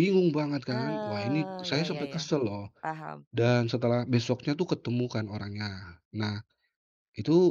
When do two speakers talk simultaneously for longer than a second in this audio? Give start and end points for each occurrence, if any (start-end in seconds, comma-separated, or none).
0.7-2.2